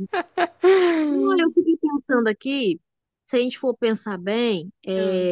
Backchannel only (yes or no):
yes